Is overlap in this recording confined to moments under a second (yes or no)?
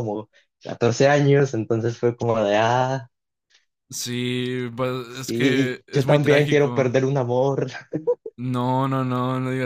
no